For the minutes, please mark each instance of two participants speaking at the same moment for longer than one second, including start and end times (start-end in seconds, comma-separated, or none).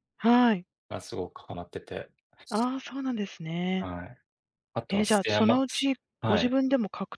4.9-6.5